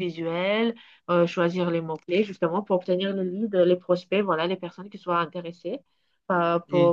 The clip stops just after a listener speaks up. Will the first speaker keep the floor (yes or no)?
yes